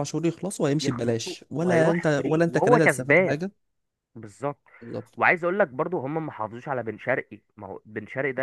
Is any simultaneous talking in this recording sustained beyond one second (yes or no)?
yes